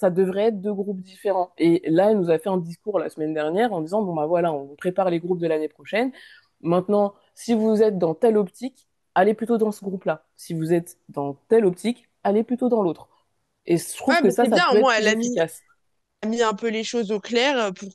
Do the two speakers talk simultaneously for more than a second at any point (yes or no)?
yes